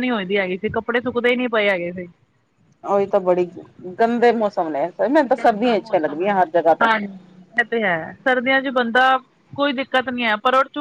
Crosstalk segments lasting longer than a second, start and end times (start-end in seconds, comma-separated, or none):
none